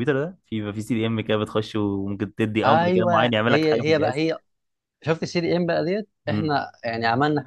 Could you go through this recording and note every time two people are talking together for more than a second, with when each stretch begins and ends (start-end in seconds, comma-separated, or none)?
2.6-4.2